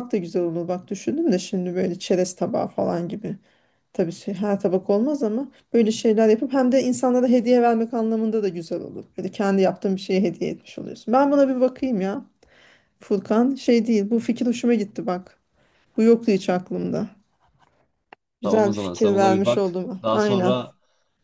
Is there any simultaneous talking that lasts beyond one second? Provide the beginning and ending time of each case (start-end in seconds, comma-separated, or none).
18.4-20.5